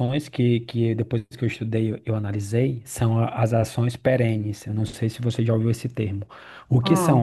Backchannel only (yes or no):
yes